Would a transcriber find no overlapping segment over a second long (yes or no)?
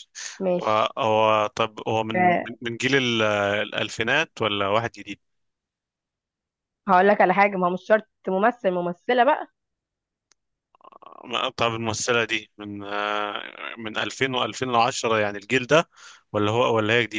yes